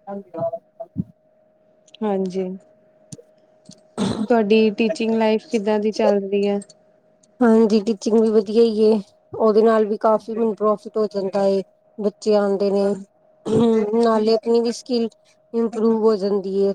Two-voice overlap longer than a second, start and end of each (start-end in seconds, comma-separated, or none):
none